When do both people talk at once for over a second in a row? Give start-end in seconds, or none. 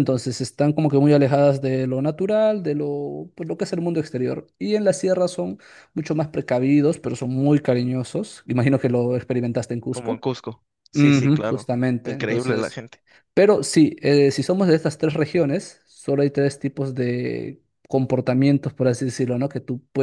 10.9-12.8